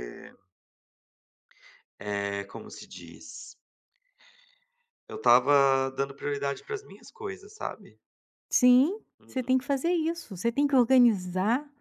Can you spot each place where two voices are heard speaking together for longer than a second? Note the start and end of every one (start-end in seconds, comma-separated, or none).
none